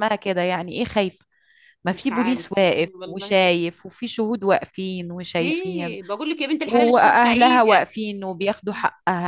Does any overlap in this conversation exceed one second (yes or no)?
yes